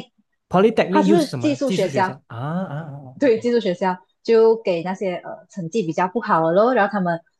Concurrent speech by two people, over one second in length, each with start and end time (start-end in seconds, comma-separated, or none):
0.9-2.2